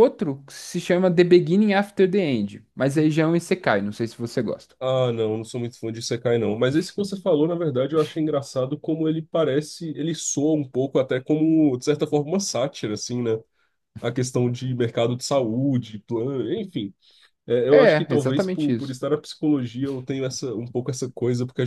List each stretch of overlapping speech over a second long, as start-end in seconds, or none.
17.7-19.0